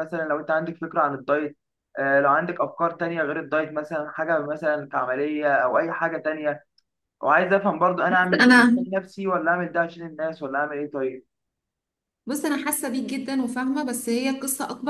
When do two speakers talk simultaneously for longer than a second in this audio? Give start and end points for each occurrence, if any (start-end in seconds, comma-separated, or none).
none